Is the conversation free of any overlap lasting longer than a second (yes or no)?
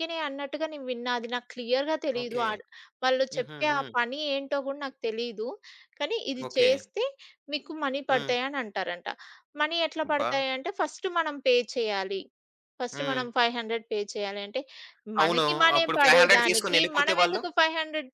no